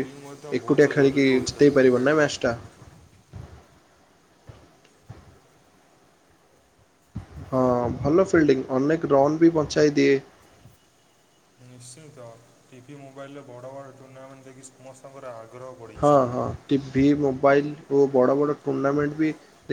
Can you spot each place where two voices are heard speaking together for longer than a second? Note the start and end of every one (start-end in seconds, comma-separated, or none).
0.6-2.2